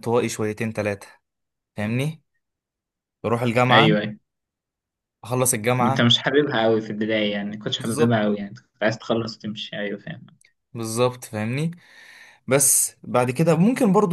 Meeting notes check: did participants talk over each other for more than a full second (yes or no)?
no